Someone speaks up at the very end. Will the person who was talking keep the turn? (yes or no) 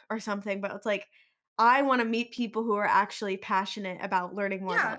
no